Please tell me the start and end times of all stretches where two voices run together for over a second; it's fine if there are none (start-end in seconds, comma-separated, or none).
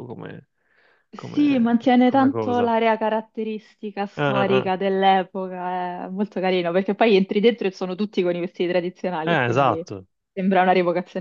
1.1-2.7